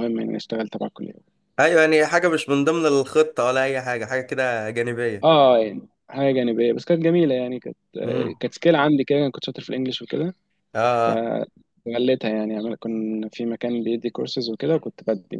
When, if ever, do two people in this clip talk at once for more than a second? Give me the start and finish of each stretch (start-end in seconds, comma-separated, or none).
none